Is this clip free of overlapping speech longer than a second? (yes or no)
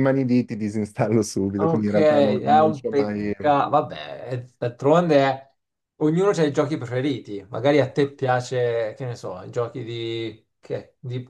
no